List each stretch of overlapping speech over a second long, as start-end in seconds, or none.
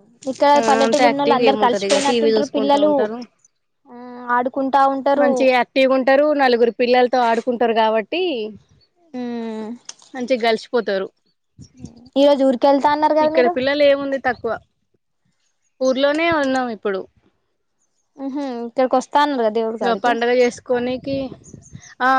0.6-2.9